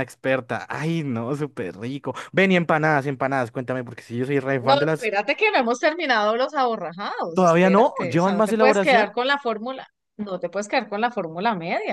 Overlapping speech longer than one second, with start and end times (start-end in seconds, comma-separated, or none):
7.3-9.1